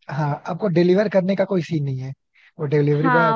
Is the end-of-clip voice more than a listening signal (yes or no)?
yes